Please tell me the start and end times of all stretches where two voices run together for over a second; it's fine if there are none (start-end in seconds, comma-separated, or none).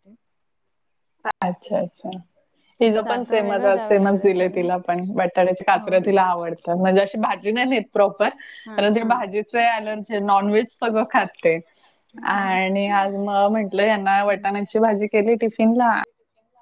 3.0-4.7